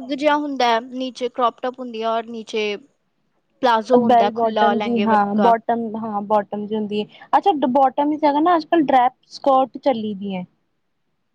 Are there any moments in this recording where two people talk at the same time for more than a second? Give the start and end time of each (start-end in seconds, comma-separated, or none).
4.1-5.5